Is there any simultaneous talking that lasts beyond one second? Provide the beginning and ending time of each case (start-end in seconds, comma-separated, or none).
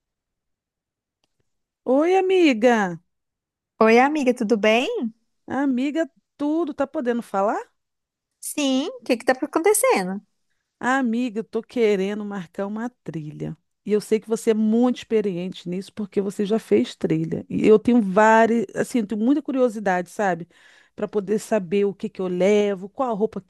none